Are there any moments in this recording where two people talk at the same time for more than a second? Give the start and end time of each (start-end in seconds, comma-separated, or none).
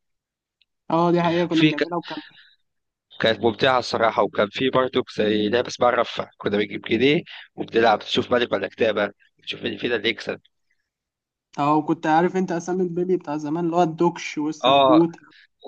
none